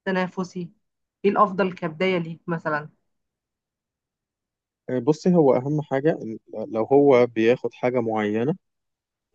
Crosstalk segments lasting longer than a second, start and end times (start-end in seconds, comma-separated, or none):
none